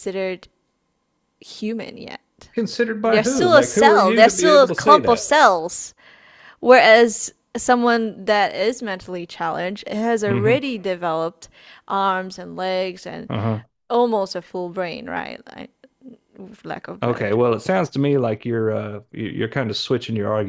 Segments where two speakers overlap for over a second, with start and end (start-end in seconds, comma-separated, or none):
3.0-5.3